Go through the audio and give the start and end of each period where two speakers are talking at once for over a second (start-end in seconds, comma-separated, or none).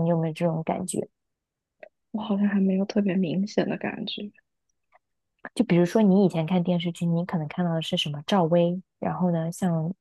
none